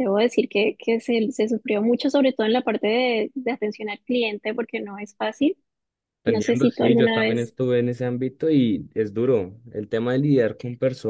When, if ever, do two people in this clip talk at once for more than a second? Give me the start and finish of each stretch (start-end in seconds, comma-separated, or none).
6.2-7.5